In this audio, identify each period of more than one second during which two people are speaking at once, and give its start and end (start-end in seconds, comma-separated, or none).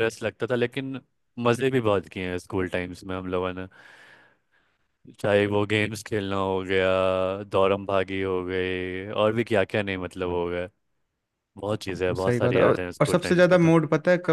12.1-13.7